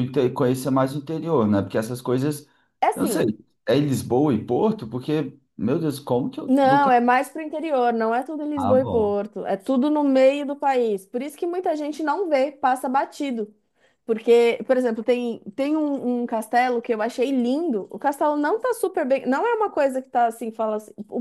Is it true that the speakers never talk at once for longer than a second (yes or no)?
yes